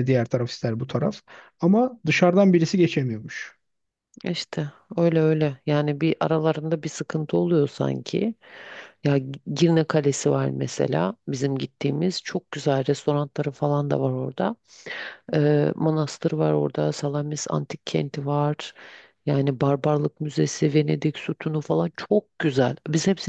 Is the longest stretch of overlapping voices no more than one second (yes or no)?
yes